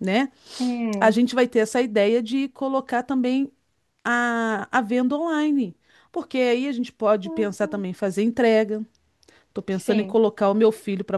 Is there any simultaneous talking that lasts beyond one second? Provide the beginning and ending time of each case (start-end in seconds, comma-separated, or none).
none